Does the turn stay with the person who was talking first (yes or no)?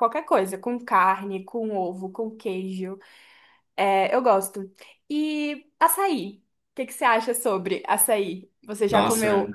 no